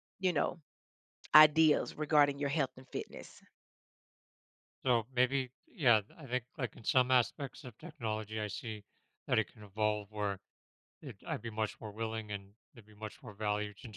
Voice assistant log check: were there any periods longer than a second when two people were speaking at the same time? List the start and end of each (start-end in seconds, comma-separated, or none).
none